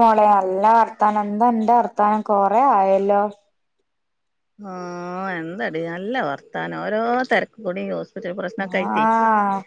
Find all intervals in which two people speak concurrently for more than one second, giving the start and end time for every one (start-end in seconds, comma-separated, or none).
none